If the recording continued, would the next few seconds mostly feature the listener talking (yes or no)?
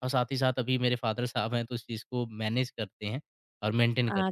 yes